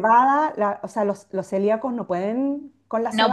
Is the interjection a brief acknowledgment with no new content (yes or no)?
no